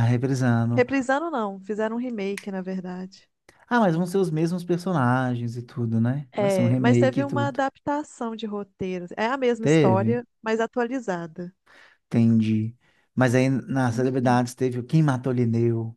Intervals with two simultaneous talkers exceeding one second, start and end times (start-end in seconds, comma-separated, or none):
6.3-7.6